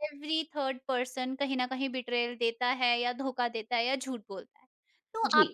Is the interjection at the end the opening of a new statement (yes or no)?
no